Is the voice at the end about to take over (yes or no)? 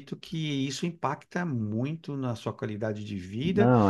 no